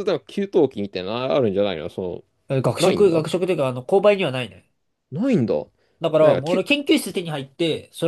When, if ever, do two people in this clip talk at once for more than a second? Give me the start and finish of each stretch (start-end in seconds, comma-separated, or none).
none